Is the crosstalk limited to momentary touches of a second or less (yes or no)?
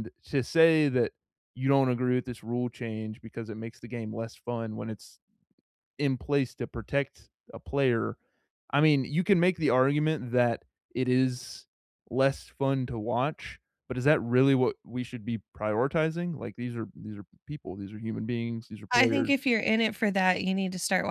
yes